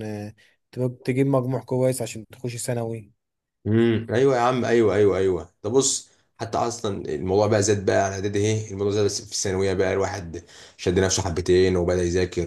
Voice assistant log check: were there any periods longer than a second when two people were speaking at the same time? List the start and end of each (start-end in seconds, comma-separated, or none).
none